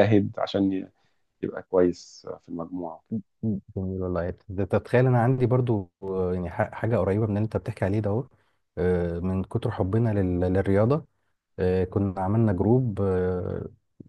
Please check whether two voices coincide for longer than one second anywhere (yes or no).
no